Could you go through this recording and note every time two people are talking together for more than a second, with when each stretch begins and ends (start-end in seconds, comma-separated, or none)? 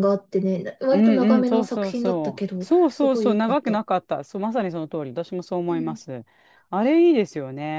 0.9-3.8